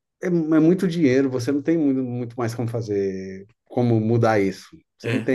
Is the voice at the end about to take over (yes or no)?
no